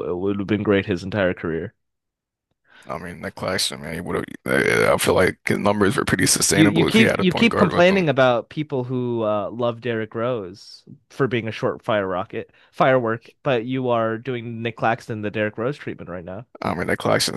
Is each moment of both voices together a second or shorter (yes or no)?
no